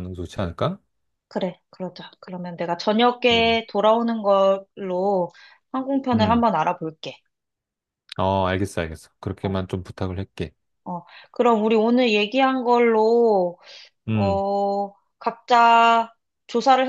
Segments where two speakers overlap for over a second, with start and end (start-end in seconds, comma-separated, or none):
none